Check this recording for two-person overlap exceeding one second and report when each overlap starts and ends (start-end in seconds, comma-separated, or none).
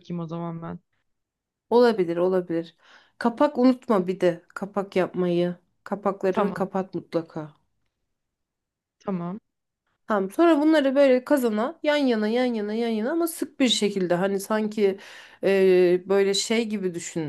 none